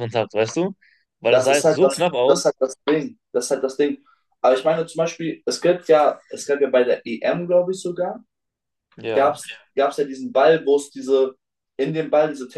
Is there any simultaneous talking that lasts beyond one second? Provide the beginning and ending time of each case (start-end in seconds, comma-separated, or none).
1.2-2.5